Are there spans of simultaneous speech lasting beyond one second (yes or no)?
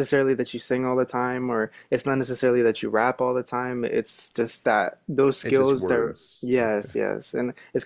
yes